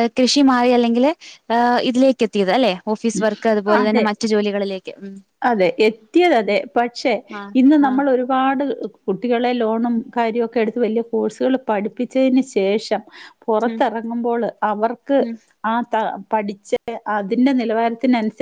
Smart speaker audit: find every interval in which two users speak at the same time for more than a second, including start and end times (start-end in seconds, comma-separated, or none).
none